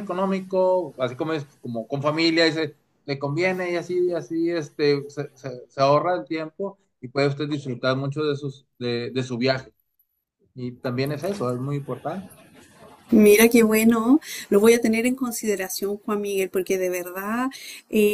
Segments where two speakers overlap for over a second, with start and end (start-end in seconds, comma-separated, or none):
none